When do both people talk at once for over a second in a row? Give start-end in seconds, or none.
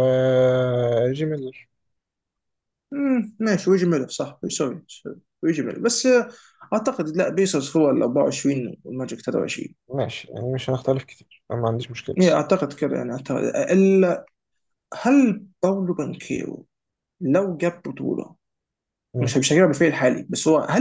none